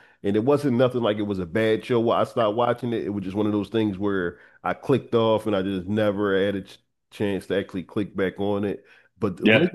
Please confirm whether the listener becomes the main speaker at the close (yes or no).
no